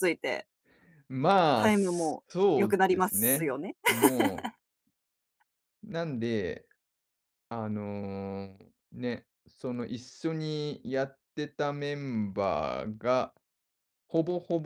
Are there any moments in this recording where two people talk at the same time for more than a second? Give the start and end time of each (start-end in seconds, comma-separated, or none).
1.5-3.5